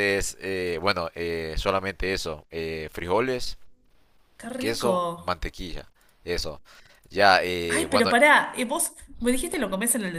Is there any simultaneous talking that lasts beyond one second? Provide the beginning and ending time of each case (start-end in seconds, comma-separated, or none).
none